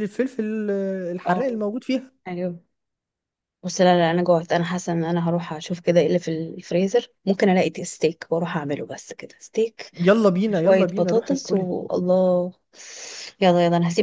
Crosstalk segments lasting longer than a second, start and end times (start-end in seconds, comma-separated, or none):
10.5-11.7